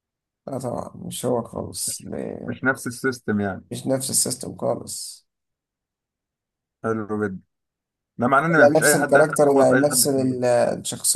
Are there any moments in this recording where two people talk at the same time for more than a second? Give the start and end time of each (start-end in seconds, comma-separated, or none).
8.6-10.4